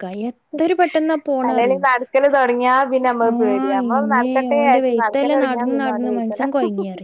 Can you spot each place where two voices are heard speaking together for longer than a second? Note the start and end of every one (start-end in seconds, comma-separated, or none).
3.3-6.5